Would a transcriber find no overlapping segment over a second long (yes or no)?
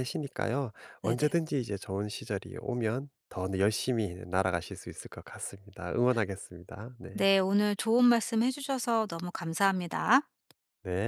yes